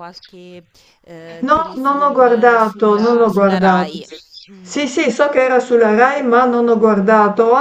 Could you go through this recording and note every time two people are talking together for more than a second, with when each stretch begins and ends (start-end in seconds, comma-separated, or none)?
1.4-4.0